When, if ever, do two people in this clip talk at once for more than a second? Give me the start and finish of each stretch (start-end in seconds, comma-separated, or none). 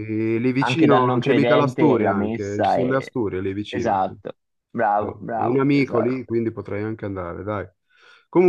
0.6-3.0, 5.0-6.3